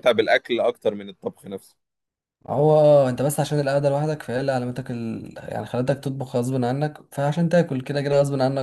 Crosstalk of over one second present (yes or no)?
no